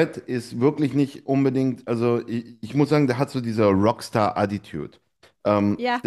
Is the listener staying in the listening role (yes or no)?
yes